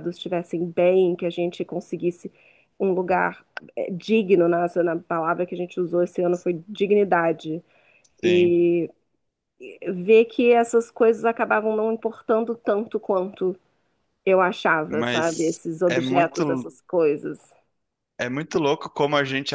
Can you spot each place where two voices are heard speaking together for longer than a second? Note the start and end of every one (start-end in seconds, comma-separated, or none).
14.9-16.7